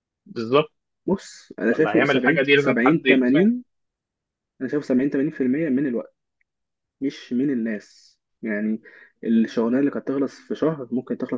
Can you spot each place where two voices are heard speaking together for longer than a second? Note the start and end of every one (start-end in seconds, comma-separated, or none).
1.7-3.5